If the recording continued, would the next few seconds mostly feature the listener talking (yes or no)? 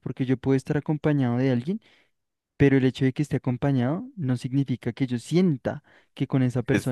no